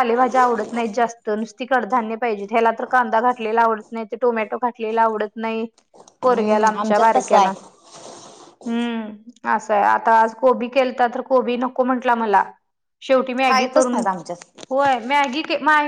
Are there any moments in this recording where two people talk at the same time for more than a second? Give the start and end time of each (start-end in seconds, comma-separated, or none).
6.2-7.5